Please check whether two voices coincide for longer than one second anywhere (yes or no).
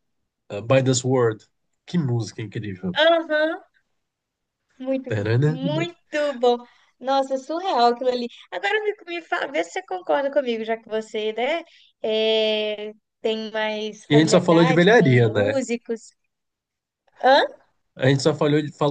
yes